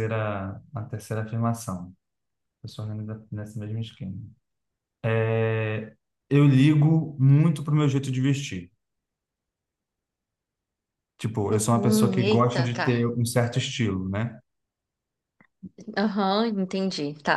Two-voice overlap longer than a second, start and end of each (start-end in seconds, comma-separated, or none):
11.5-13.2